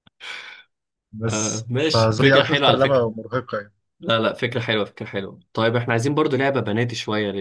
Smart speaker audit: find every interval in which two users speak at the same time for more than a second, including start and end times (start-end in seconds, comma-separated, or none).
1.3-3.0